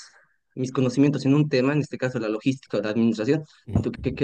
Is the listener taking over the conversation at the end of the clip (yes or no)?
no